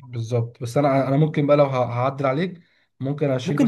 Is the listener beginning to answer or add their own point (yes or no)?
no